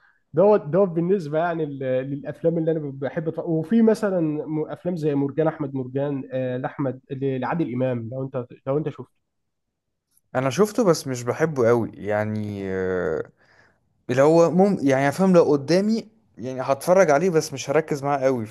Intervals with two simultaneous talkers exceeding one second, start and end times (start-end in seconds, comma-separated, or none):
none